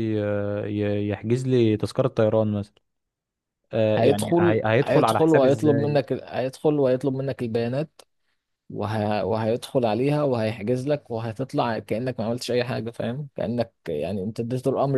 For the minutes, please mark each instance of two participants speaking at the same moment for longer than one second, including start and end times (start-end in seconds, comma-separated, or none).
4.0-5.5